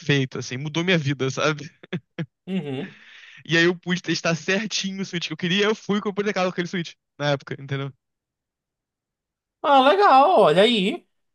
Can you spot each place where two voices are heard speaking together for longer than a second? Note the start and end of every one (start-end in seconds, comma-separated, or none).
none